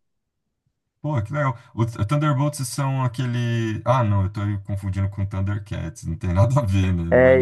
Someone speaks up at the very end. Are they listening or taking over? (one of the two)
taking over